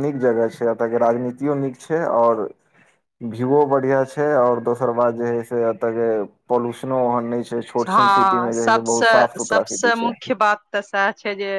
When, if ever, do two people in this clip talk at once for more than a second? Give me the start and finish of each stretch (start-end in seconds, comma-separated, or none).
7.9-10.1